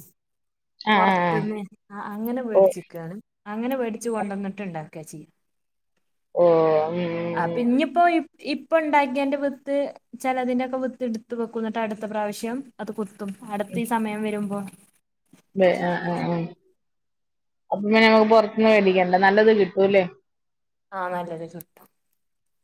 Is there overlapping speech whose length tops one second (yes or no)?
no